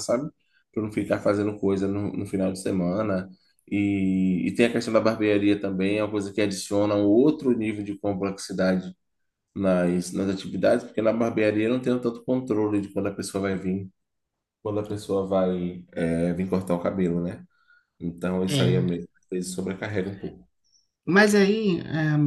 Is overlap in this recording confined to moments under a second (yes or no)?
yes